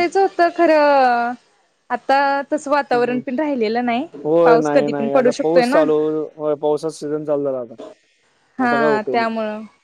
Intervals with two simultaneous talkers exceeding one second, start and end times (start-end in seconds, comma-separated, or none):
4.5-5.8